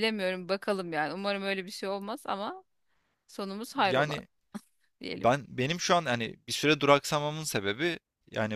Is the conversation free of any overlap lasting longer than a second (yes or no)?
yes